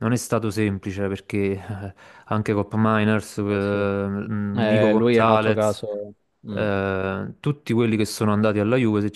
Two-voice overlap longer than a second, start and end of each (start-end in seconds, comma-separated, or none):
4.5-5.8